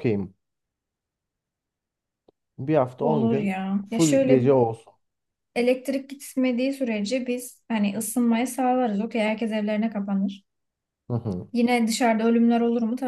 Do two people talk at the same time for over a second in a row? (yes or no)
yes